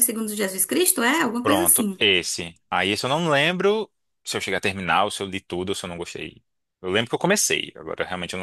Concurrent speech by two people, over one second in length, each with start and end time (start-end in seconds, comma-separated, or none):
none